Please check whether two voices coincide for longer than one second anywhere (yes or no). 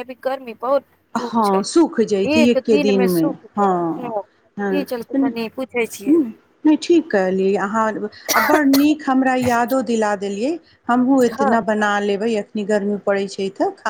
yes